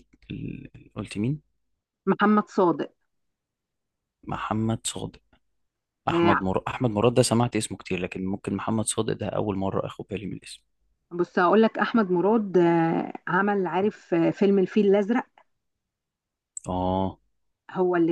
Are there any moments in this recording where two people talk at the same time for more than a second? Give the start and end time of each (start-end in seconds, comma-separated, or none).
none